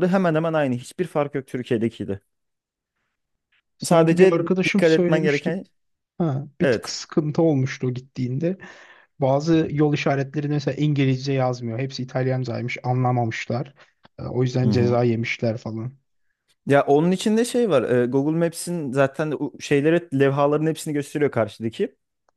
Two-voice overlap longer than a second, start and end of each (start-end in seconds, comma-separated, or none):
3.8-5.6